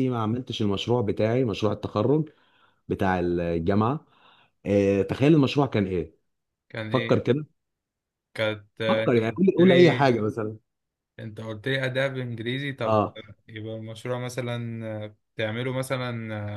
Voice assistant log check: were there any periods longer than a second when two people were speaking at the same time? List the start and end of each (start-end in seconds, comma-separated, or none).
8.9-10.1